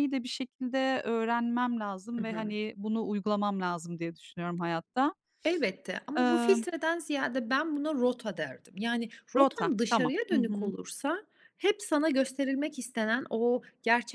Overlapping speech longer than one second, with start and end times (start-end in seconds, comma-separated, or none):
9.3-10.7